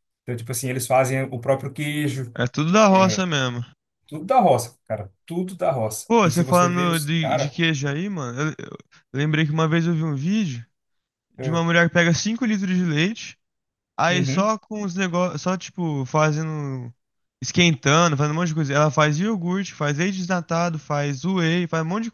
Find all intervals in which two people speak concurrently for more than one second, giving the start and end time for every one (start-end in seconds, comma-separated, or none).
6.1-7.6